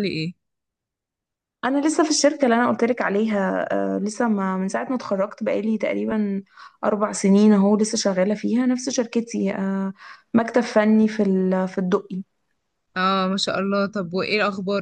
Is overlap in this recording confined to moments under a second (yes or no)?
yes